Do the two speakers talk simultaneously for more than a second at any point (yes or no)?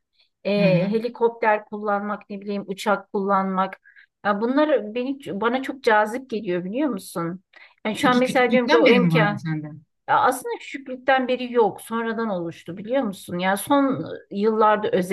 yes